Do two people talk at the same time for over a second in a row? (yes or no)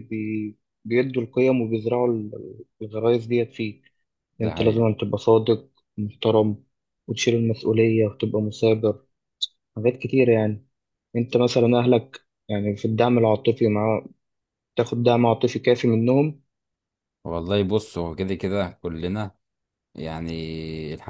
no